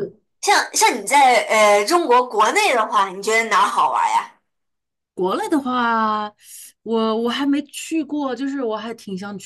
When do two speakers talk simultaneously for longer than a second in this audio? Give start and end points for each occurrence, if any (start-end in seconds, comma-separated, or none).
none